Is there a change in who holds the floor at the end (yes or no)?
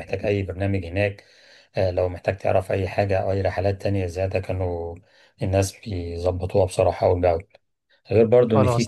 no